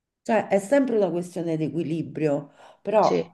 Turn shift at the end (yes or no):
no